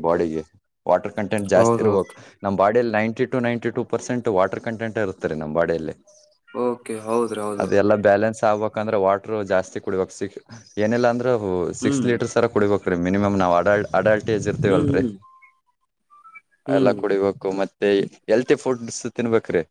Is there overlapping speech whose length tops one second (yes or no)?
no